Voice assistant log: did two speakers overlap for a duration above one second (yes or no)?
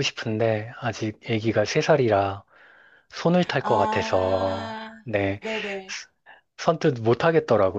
yes